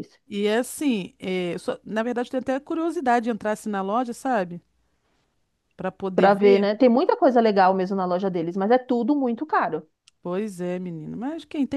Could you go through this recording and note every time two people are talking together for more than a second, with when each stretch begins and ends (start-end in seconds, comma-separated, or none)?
none